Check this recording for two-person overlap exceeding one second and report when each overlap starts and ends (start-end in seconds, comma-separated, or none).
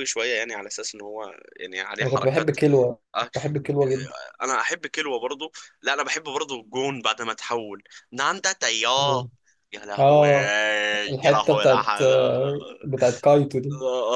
11.2-12.8